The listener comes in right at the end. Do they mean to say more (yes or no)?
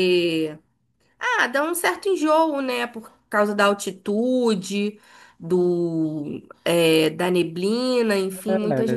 yes